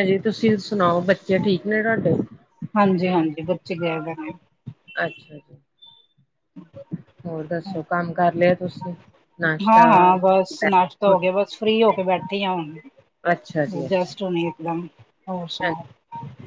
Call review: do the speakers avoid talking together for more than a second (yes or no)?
yes